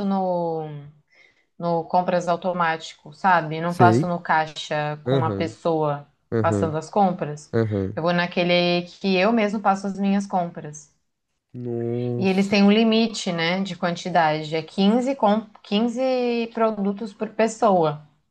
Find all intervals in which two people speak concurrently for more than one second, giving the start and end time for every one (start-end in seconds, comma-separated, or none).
none